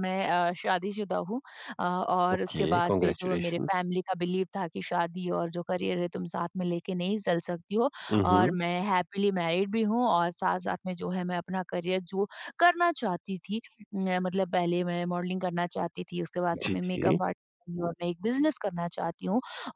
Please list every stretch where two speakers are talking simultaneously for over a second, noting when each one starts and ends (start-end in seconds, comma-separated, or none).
2.4-3.8